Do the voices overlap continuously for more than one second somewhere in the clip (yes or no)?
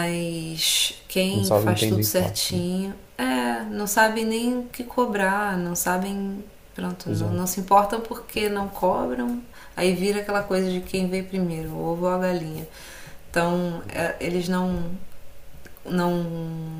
yes